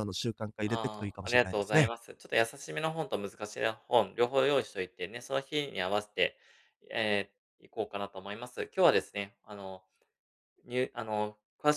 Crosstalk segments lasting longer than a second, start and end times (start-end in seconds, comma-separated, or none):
0.6-1.9